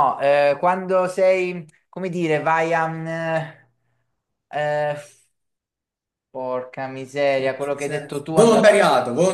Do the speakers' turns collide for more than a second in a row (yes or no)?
yes